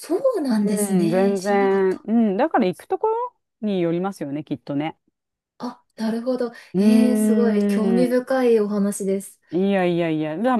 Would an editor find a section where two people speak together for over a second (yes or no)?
yes